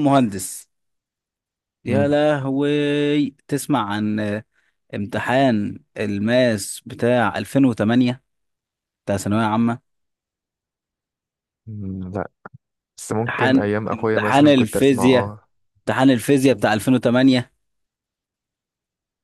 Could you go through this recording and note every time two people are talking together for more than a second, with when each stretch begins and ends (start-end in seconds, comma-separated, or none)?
13.3-15.3